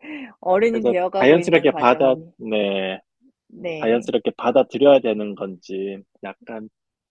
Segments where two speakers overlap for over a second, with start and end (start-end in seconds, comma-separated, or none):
0.7-2.3